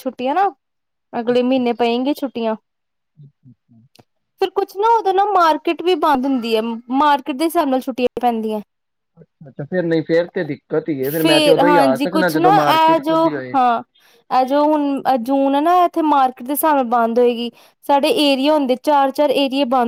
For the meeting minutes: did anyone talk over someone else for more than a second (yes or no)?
yes